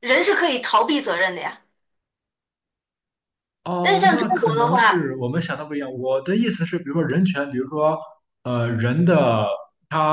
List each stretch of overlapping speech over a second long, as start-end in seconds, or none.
3.8-5.1